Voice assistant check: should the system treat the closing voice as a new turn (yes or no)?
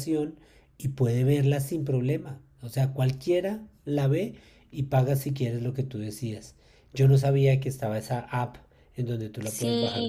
yes